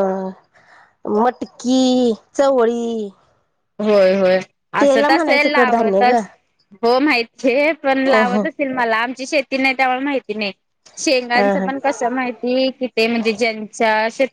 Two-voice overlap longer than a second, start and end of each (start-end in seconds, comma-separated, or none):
4.8-6.2